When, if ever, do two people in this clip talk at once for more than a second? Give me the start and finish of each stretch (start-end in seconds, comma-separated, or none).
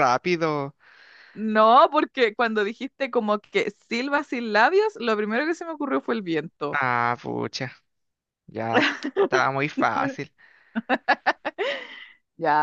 none